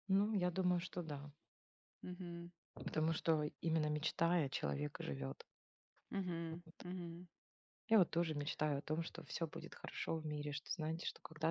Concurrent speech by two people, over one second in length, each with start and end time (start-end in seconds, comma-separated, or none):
none